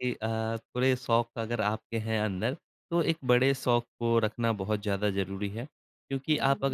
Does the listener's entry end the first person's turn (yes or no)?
no